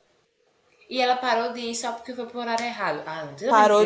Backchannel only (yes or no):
no